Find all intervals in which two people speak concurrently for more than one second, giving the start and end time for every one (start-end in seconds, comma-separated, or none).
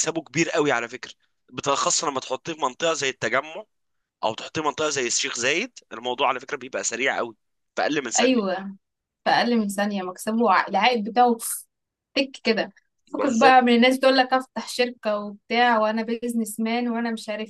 none